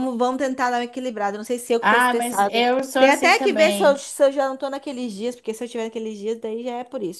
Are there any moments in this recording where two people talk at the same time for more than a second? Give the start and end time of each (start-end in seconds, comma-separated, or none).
1.8-4.0